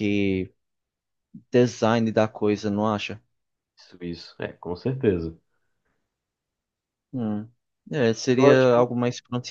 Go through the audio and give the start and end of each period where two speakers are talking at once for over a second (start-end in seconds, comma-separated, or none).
none